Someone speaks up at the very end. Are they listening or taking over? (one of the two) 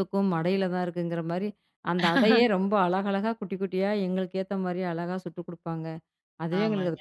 listening